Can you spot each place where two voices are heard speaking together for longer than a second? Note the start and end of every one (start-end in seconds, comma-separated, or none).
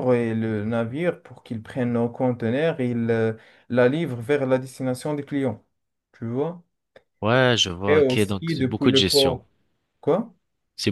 7.9-9.4